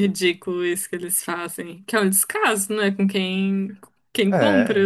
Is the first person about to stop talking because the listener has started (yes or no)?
no